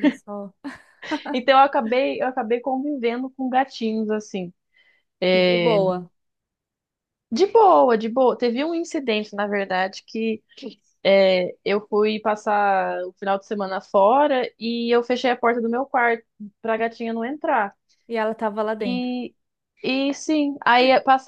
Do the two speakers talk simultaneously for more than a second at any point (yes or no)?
no